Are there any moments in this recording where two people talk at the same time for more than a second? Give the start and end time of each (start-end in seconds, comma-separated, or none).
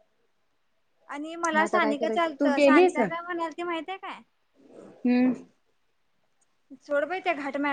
1.6-3.0